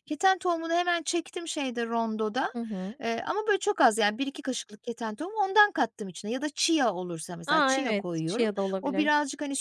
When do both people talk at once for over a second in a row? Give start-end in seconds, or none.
7.5-9.1